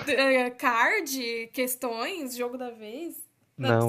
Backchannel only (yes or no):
no